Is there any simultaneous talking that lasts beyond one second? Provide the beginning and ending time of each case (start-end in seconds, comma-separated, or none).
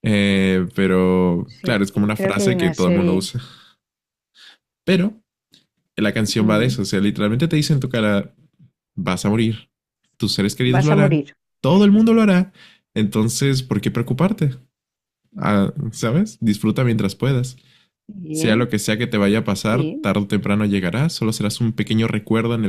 1.4-3.3